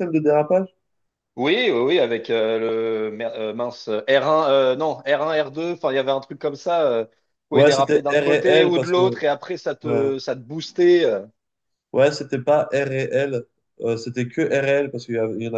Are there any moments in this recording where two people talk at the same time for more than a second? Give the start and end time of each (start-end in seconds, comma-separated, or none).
7.5-9.2